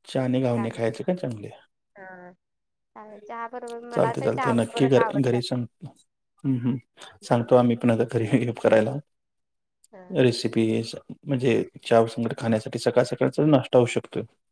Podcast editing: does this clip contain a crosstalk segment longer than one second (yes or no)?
no